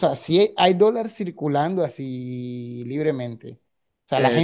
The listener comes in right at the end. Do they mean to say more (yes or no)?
no